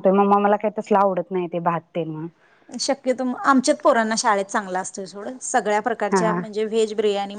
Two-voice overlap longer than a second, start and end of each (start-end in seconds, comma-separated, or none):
none